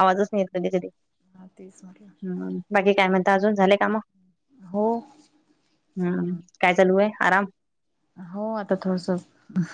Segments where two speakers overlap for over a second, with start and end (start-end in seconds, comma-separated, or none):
none